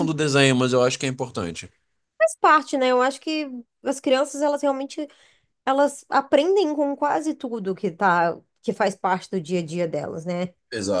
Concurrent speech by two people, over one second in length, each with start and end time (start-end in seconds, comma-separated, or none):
none